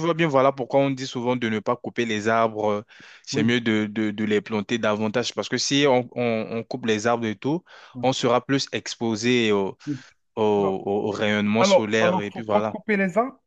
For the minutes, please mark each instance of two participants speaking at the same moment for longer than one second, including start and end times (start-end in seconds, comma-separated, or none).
10.6-12.8